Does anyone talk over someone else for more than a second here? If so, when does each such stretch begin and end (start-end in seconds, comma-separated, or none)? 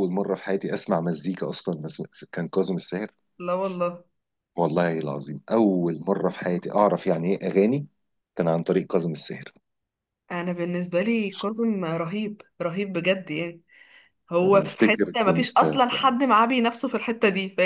14.4-15.8